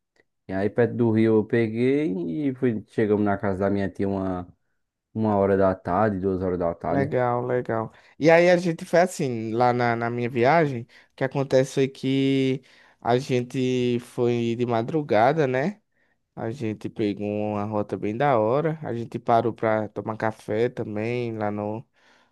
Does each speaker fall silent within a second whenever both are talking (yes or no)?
yes